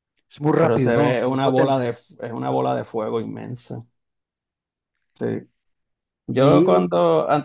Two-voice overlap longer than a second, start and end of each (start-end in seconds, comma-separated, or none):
0.6-2.0